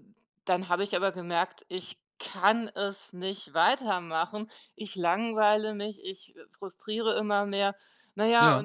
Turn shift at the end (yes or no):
no